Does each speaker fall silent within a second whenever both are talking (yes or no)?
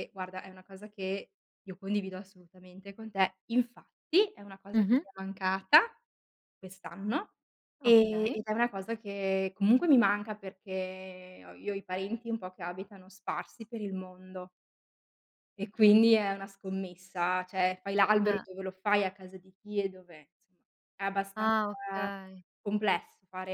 yes